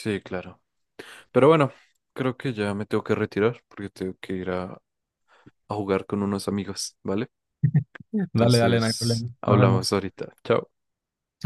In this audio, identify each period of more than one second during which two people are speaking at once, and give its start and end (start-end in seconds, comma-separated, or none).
8.3-10.0